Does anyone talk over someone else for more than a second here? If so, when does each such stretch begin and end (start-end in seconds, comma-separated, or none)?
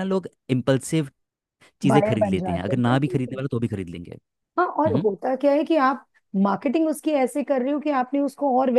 1.9-3.4